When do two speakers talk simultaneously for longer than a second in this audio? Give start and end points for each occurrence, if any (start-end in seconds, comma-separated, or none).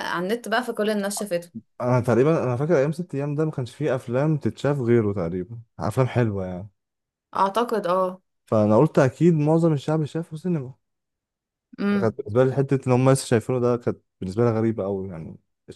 none